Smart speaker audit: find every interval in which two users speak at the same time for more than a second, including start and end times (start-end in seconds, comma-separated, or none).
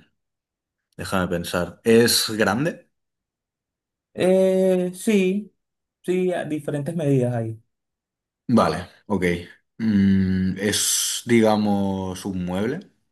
none